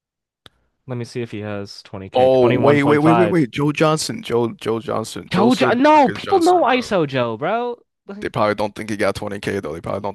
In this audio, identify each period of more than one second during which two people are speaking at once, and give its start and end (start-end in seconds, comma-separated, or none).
2.1-3.5, 5.3-6.9